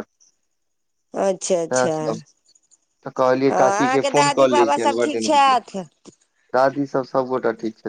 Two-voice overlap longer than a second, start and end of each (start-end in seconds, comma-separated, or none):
3.5-5.6